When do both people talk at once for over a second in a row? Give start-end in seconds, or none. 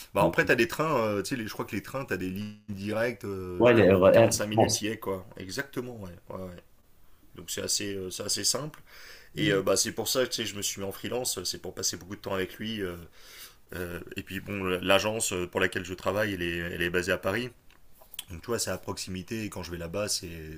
3.6-4.9